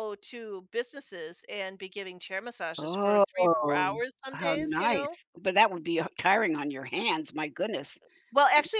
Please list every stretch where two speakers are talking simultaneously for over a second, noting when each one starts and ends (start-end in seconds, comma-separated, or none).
2.8-5.2